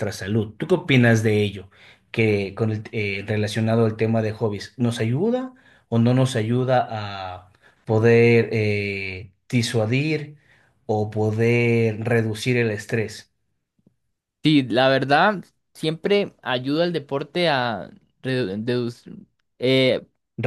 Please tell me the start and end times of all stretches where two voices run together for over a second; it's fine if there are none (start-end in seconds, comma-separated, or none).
none